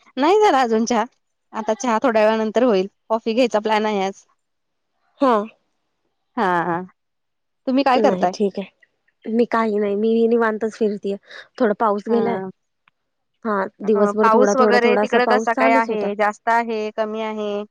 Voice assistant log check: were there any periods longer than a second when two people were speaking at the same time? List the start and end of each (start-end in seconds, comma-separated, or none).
13.9-16.1